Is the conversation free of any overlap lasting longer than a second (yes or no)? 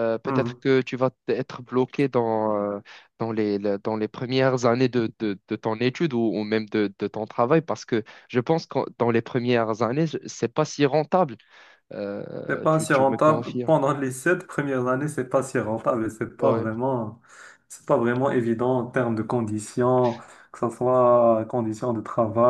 no